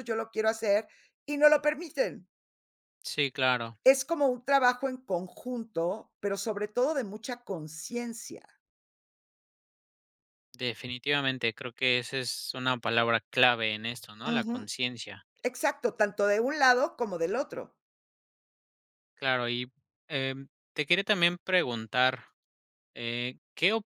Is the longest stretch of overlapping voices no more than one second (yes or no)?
yes